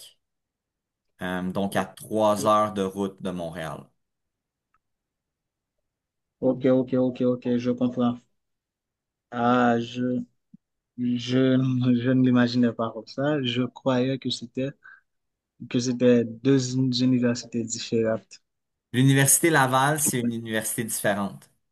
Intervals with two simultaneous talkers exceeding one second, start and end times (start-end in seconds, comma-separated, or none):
none